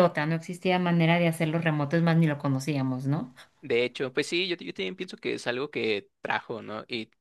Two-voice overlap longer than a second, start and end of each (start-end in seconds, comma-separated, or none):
none